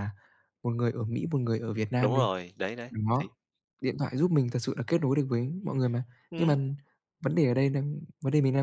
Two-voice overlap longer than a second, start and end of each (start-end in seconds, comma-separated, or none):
none